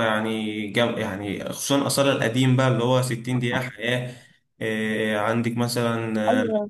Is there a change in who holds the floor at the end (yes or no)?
no